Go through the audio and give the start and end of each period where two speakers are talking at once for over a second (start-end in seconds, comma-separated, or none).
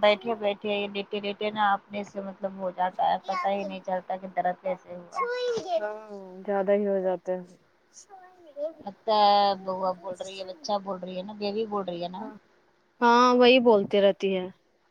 none